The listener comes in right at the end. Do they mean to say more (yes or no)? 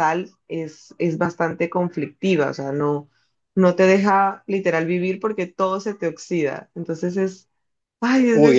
yes